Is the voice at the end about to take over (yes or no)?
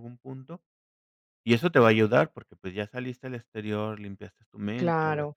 yes